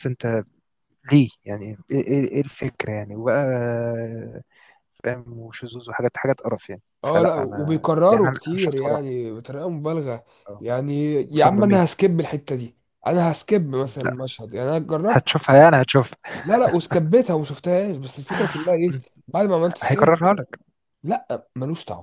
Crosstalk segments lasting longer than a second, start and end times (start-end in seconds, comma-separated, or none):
7.0-9.1